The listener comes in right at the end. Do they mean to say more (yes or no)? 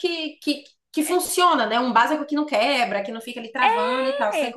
yes